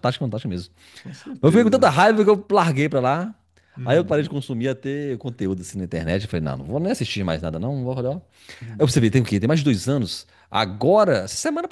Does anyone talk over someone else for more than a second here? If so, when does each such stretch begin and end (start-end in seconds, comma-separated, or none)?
none